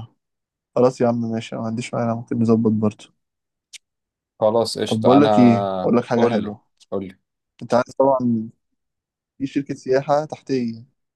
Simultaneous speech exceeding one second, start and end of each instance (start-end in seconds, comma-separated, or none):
4.9-6.5